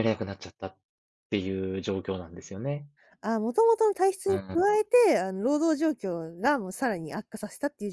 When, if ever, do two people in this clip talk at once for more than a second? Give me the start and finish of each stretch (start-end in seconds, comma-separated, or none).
none